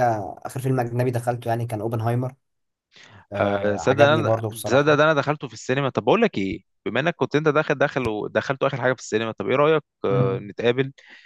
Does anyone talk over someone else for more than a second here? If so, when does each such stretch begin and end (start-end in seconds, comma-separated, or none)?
3.4-5.0